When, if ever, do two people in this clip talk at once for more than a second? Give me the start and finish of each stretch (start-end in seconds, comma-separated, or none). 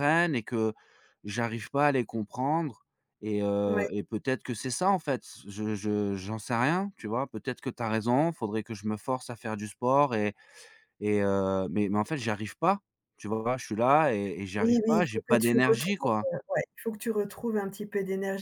14.6-16.3